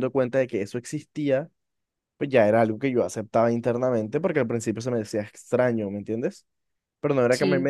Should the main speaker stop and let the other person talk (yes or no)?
no